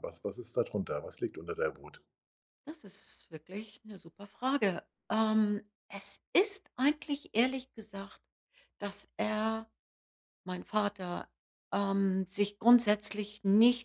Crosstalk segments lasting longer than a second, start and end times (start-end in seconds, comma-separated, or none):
none